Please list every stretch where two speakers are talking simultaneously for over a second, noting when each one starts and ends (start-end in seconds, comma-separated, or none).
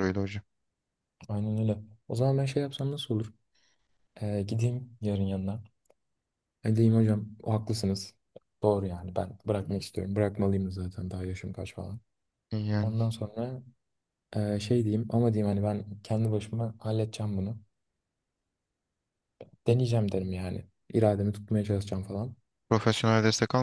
none